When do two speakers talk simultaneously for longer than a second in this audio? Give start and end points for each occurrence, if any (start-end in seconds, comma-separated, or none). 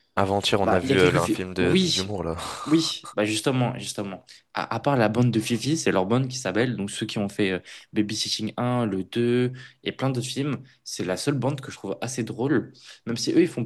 0.6-2.2